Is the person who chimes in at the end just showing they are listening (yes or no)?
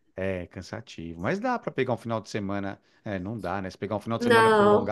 yes